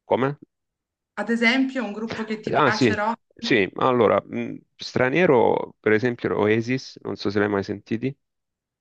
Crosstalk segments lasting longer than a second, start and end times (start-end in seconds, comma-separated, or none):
none